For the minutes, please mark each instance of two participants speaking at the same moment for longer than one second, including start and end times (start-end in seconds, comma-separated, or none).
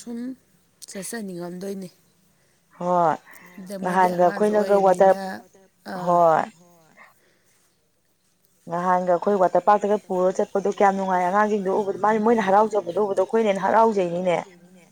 3.8-5.2